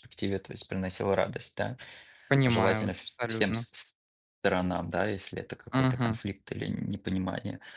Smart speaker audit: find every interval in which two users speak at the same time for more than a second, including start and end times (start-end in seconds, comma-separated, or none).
2.5-3.7